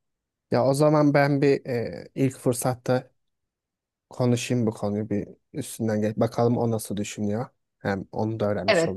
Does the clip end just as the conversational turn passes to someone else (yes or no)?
yes